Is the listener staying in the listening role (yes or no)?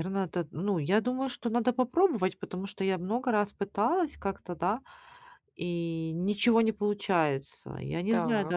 yes